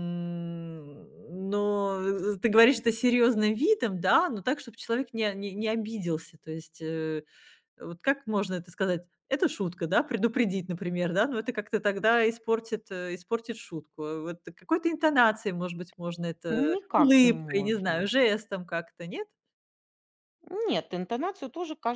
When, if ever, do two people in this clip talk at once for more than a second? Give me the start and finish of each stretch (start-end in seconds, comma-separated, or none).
16.7-18.1